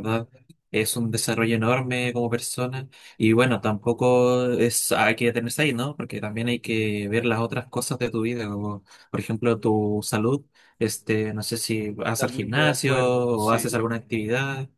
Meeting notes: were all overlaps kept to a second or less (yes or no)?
no